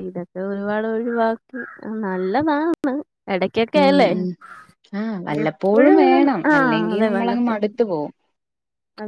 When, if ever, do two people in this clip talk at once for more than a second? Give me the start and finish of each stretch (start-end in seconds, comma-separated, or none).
5.4-7.5